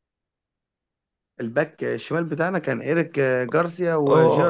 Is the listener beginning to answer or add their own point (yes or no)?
yes